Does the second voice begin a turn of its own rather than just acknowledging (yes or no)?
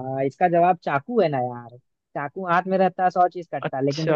no